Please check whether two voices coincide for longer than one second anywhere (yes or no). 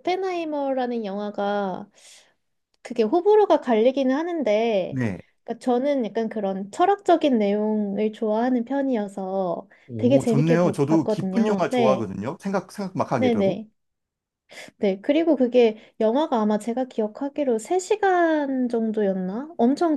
yes